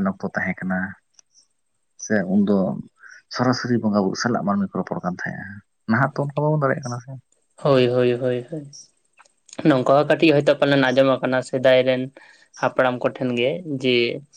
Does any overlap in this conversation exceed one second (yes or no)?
no